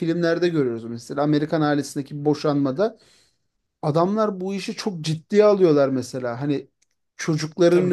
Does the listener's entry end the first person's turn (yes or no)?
yes